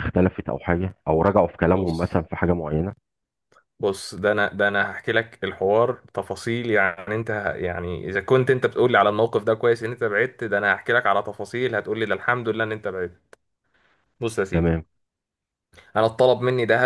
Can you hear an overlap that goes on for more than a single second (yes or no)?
no